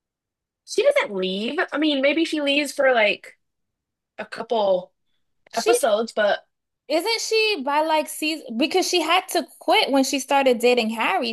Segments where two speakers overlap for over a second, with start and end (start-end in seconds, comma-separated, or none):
none